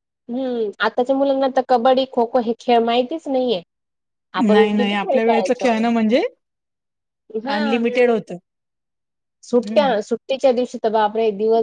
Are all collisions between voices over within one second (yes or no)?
no